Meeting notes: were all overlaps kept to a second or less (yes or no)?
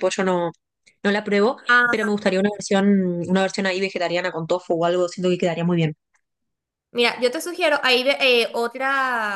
yes